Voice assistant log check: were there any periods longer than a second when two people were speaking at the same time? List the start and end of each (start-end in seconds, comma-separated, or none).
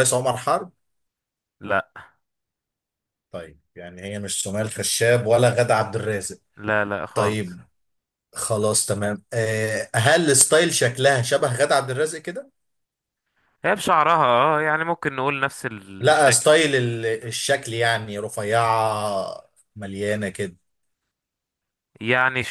none